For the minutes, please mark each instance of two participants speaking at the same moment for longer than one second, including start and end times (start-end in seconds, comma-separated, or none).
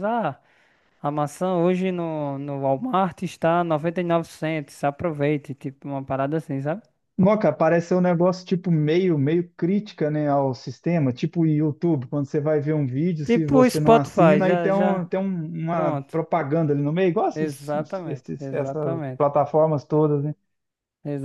13.2-15.0, 17.4-19.3